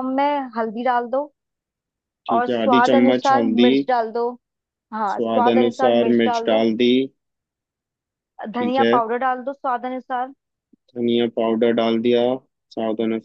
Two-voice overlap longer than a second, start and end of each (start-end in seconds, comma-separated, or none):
2.3-3.7, 5.1-6.6